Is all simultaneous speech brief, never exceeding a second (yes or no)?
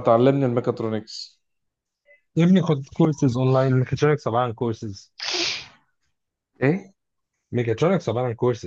yes